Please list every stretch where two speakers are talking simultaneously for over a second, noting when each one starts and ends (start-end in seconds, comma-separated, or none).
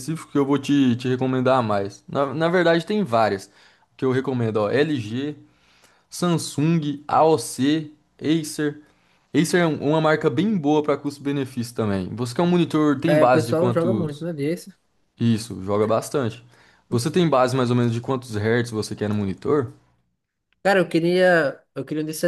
13.1-14.2